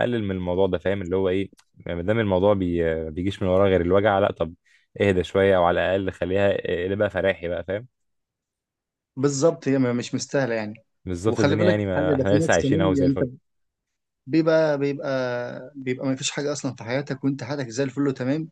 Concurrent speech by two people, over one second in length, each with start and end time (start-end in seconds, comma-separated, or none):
11.3-13.3